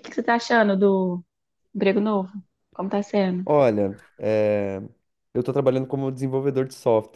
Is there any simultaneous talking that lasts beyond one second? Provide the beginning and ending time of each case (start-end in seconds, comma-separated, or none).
none